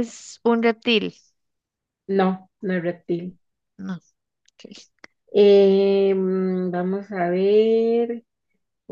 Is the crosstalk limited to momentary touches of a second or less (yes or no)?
yes